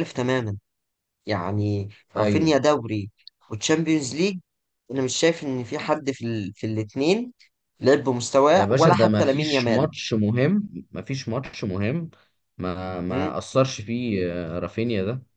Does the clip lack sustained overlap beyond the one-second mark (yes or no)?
no